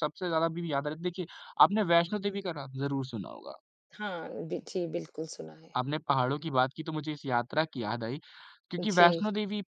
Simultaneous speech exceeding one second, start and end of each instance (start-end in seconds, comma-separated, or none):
none